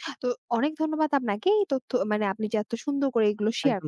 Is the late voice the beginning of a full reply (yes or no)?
yes